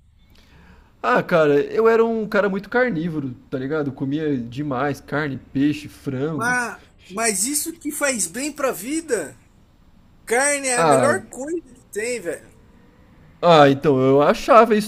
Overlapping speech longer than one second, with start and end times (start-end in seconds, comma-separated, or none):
none